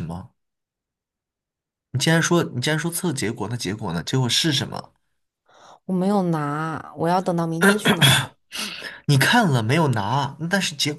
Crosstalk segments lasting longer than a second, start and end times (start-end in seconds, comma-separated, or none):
none